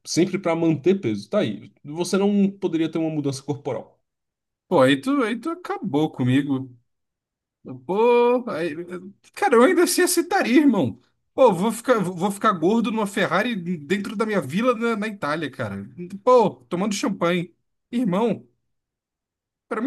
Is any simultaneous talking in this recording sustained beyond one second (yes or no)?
no